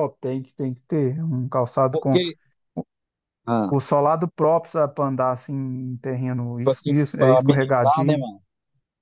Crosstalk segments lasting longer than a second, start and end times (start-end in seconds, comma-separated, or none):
6.6-8.3